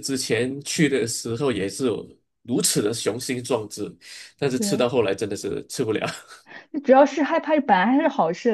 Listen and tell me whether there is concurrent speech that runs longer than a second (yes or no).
no